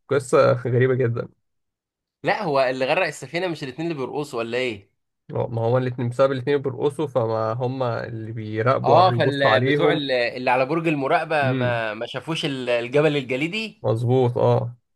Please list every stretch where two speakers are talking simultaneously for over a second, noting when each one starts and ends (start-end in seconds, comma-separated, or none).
8.8-10.0